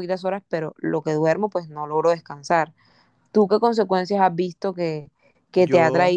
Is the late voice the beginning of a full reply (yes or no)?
no